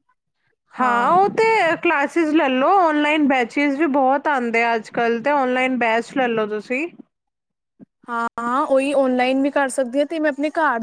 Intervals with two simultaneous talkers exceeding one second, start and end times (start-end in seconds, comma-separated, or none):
none